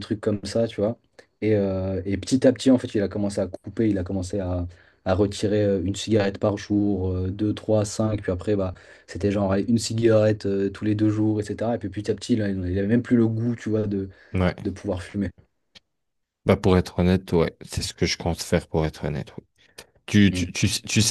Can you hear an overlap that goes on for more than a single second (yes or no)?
no